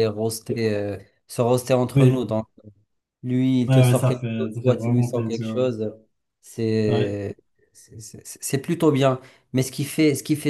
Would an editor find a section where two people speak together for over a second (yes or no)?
yes